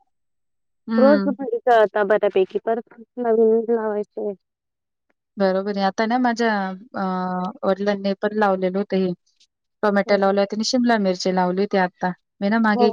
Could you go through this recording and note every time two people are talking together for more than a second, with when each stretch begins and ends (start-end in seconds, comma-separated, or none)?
none